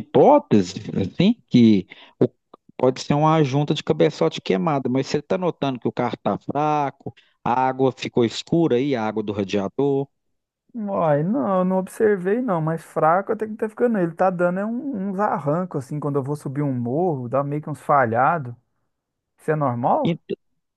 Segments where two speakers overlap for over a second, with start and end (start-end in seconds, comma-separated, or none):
none